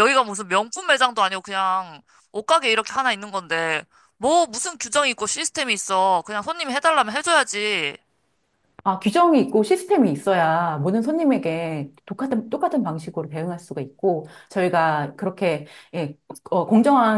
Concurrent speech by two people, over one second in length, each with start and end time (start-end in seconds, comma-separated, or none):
none